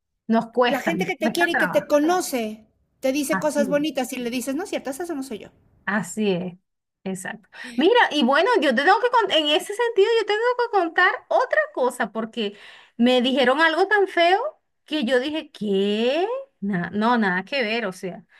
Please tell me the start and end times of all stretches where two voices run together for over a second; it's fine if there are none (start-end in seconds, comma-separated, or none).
0.6-1.9